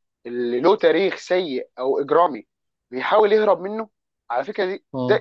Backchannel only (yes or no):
yes